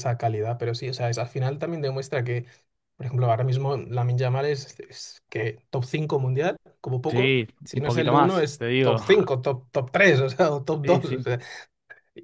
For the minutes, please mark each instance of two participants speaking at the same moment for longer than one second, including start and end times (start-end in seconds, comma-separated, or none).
7.1-9.0